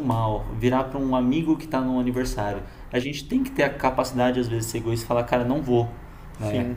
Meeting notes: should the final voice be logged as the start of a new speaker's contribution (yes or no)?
yes